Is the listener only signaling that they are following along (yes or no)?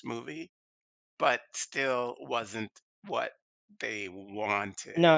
no